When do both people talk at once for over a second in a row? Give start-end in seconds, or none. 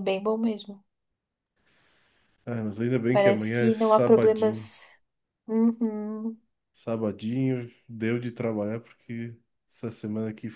3.1-4.7